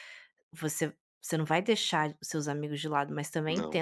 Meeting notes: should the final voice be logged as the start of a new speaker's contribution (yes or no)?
no